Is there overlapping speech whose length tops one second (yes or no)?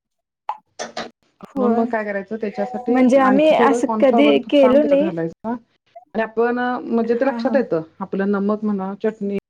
yes